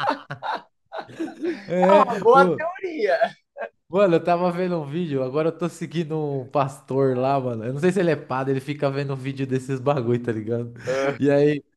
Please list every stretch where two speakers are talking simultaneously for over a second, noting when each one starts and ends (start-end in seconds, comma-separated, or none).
none